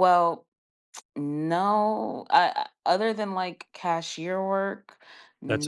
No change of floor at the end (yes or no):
no